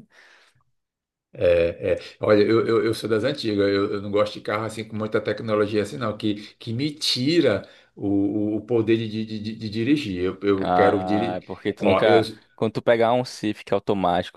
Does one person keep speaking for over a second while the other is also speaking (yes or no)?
yes